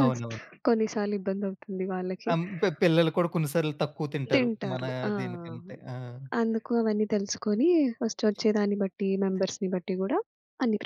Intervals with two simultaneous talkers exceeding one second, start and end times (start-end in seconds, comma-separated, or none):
none